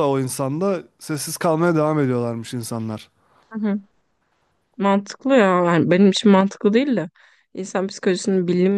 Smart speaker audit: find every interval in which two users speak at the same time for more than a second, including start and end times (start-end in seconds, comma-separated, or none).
none